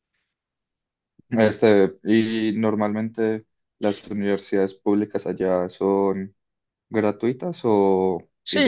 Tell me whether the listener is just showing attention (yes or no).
no